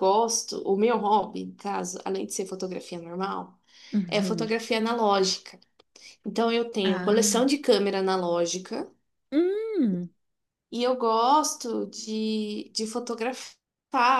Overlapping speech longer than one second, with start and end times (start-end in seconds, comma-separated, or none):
none